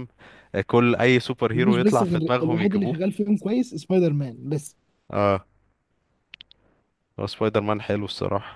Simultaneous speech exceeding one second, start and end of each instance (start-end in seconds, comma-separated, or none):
1.5-3.0